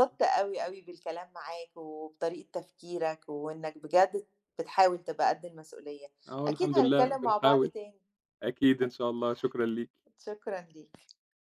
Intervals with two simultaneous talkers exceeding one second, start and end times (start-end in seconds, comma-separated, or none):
6.5-7.7